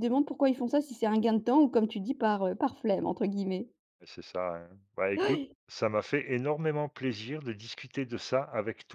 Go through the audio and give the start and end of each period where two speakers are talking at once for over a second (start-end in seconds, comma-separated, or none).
none